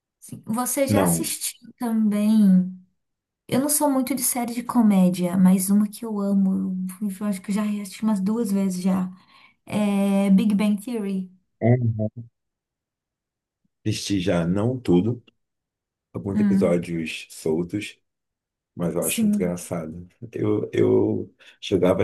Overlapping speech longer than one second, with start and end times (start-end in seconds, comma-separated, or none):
none